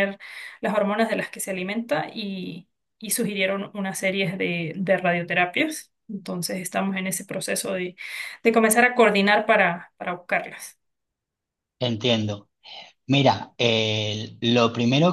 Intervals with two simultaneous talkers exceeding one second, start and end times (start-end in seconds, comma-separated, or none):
none